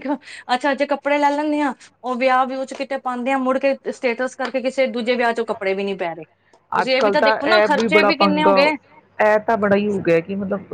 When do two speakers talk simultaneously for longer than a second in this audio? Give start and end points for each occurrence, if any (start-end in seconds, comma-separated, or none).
none